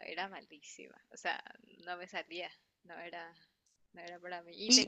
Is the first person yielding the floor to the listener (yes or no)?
no